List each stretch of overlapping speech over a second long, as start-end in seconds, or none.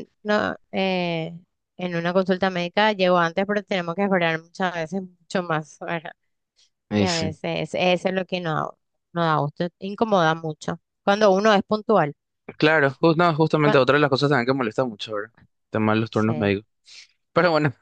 none